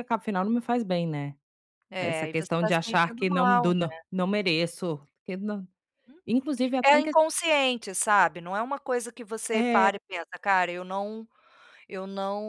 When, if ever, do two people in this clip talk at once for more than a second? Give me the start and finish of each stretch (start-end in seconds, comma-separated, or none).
2.0-4.0